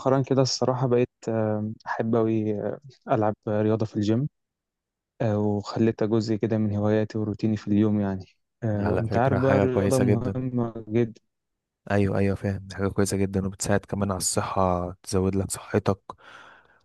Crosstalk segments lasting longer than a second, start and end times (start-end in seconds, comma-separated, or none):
8.8-10.4